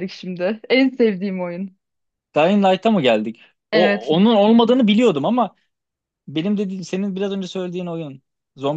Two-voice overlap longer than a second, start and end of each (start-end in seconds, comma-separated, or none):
none